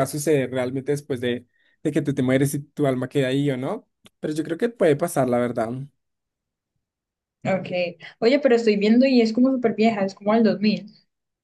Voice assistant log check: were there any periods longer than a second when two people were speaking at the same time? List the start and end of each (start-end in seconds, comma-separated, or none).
none